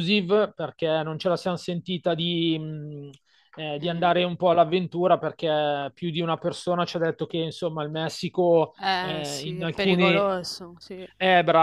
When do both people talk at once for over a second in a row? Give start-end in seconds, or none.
8.8-10.3